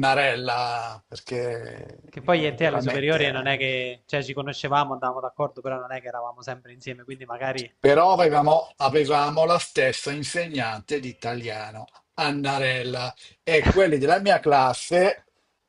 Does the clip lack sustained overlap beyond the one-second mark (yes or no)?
no